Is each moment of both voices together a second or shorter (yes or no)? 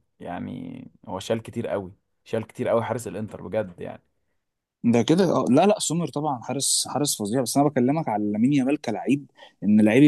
yes